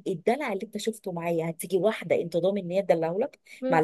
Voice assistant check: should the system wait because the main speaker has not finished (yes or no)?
yes